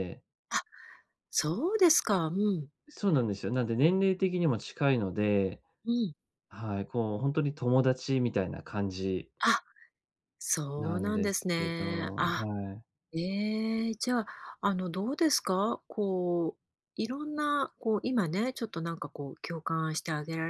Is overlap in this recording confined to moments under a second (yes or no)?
no